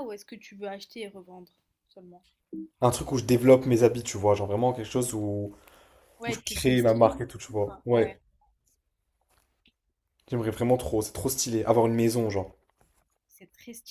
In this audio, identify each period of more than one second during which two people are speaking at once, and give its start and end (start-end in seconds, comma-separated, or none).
6.3-8.2